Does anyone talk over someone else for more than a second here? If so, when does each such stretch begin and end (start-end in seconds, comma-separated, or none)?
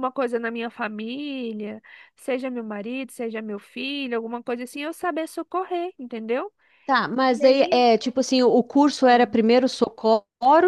none